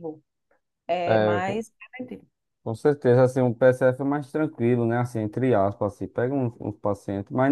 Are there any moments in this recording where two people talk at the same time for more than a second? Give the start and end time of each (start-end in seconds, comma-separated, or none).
none